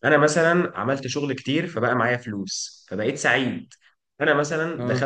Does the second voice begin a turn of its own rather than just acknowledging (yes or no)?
no